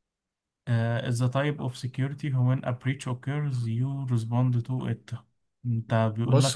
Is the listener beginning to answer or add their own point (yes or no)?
yes